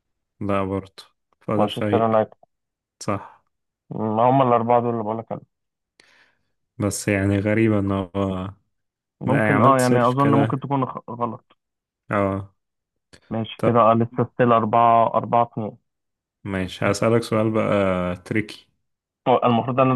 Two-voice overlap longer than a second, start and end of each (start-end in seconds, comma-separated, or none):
9.2-10.7